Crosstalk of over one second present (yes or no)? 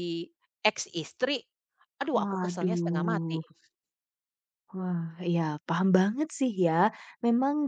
yes